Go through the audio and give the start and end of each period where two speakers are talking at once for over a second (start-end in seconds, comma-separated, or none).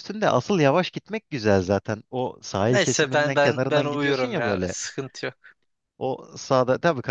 2.7-4.8